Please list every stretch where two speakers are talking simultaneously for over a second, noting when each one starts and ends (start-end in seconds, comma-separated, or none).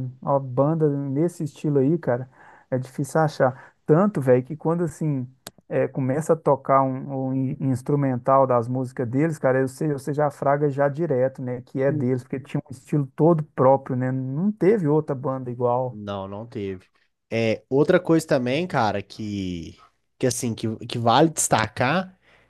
none